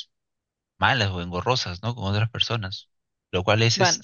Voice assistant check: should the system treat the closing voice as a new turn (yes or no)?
no